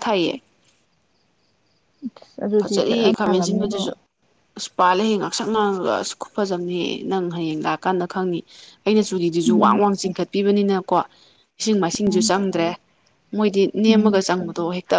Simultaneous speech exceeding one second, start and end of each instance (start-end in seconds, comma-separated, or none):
2.6-3.8